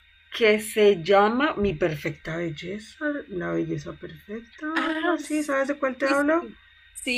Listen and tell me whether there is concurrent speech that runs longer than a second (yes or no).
yes